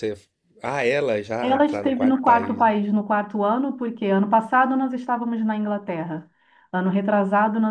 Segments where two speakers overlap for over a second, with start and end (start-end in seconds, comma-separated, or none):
1.4-2.7